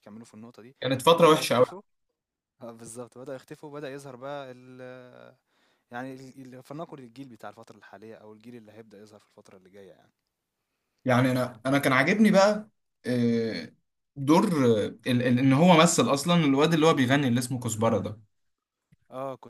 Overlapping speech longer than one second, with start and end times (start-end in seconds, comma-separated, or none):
none